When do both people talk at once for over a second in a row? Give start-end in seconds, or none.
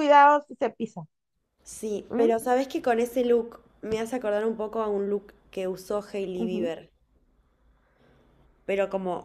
none